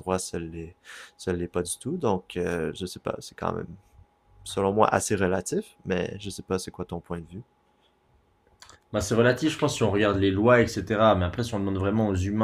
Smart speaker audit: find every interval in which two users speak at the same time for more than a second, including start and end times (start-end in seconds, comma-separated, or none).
none